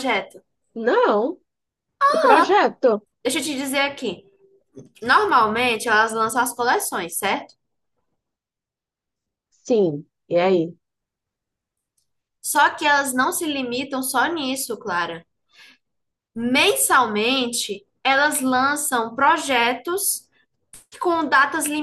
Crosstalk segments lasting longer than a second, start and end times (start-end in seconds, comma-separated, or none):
none